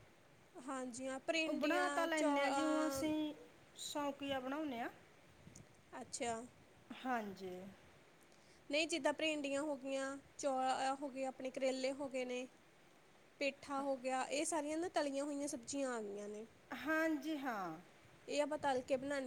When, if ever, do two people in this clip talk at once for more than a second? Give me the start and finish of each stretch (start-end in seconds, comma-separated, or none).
1.5-3.0